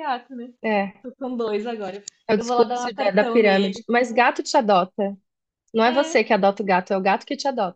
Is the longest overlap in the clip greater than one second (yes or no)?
yes